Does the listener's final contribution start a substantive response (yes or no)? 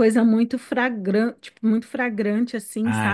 yes